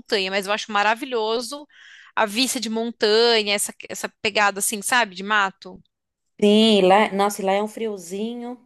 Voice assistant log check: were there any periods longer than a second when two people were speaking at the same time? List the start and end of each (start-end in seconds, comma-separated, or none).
none